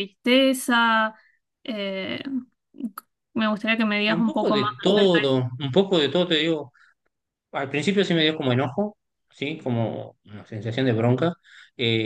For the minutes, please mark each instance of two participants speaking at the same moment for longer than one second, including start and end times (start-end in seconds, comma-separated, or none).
4.1-5.4